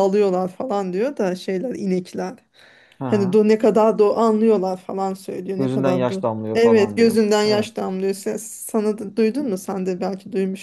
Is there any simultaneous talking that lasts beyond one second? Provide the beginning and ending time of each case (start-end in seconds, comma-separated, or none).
5.5-7.7